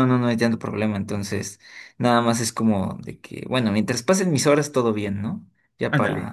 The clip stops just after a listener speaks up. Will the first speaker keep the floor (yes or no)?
yes